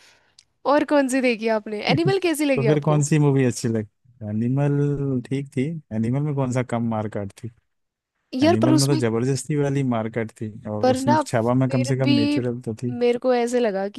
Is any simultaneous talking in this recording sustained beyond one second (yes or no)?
yes